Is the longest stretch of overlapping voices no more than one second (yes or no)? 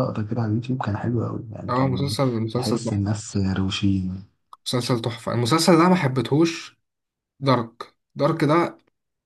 no